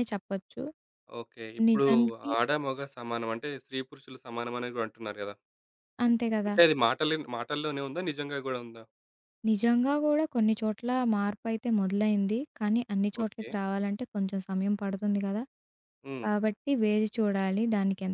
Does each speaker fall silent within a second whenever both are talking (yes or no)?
yes